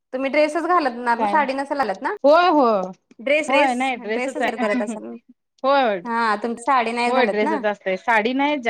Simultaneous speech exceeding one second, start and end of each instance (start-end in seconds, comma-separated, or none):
none